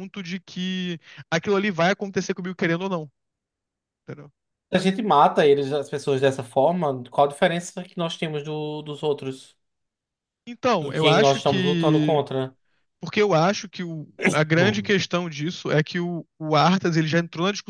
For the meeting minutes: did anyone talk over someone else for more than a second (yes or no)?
yes